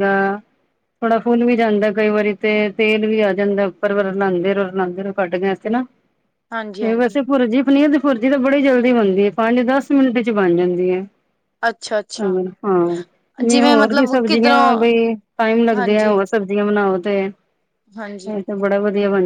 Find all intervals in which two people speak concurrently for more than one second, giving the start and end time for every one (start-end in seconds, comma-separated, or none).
13.5-14.9